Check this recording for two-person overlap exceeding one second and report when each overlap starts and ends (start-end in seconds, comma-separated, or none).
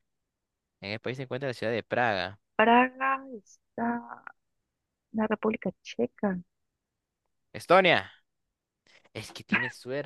none